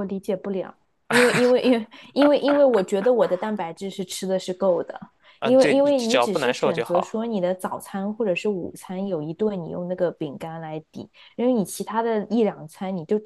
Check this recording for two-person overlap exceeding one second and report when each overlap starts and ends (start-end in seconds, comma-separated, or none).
5.4-7.2